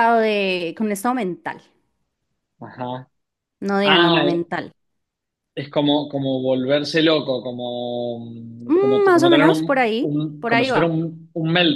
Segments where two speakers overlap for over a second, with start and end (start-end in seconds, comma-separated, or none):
8.8-10.9